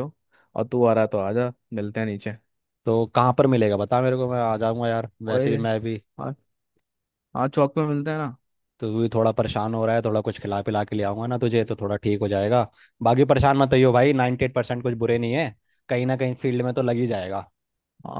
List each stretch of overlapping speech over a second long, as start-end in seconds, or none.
none